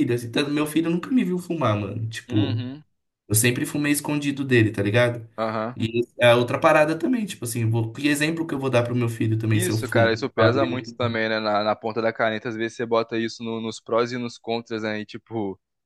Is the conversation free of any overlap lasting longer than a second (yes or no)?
no